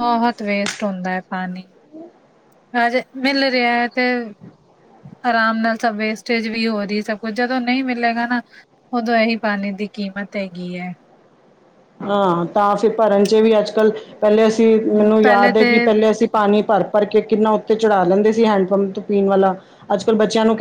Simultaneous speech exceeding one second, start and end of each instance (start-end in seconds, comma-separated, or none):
none